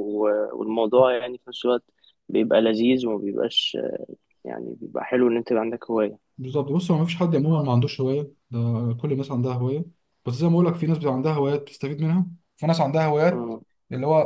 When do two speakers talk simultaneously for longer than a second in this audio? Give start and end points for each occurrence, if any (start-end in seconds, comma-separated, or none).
none